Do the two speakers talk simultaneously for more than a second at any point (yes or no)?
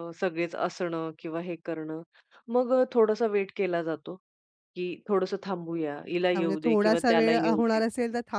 yes